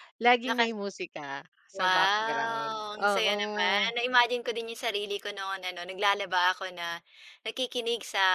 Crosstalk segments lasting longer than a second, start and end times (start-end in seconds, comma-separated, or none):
1.8-4.0